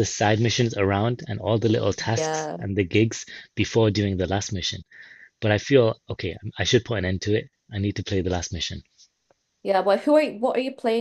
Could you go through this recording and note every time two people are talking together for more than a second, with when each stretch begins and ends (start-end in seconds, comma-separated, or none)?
none